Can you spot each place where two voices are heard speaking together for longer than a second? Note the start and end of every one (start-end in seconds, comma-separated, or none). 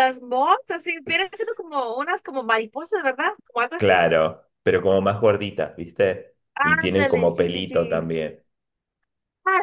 6.5-8.1